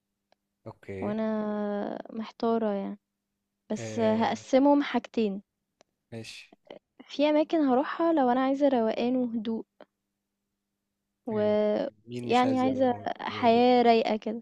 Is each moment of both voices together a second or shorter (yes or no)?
no